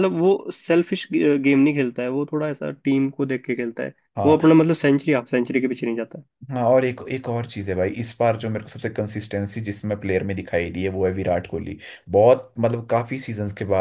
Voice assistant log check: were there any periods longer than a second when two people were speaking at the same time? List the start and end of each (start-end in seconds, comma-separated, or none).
none